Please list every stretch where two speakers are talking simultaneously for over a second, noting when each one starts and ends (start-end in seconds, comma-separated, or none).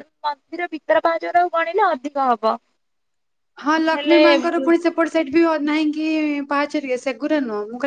none